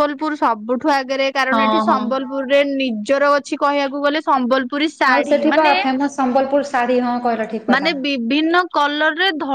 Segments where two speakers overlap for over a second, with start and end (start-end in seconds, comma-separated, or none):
none